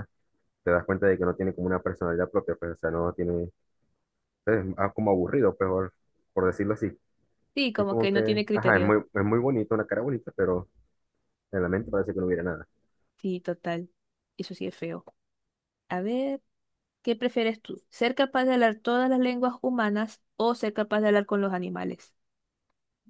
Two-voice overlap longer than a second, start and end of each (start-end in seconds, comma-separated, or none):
7.8-9.0